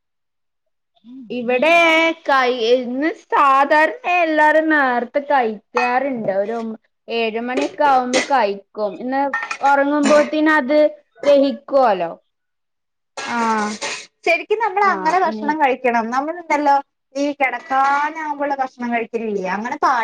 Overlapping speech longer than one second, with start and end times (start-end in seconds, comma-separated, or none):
none